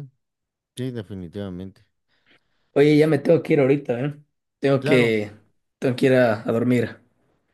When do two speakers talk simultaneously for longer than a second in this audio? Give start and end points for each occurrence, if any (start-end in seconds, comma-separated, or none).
none